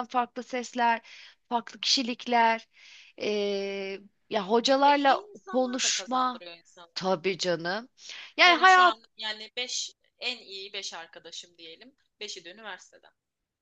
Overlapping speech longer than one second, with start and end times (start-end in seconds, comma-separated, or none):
4.8-6.4